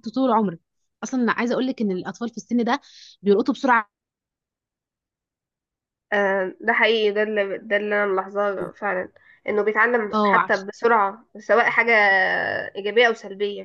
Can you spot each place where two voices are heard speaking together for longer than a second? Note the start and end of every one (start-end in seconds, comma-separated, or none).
none